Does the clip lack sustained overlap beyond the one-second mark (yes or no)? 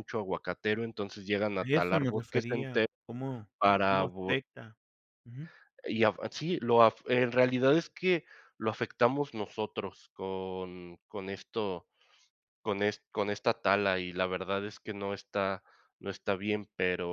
no